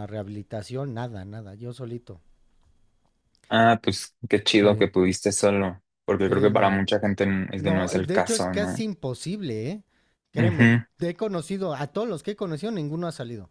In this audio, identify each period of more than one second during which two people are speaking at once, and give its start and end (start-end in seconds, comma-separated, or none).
7.6-8.8